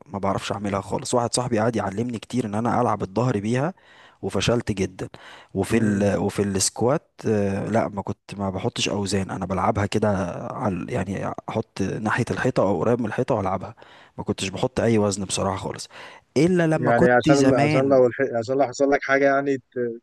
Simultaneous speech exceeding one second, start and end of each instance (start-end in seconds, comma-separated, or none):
16.8-18.0